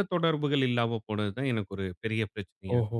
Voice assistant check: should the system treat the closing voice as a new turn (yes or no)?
yes